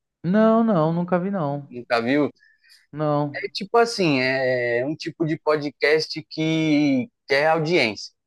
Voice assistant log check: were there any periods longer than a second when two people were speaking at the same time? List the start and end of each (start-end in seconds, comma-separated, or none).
none